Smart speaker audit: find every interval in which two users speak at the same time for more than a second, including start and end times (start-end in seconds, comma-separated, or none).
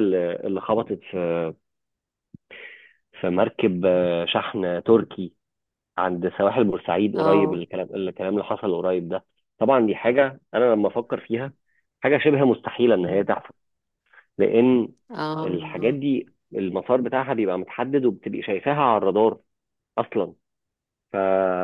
none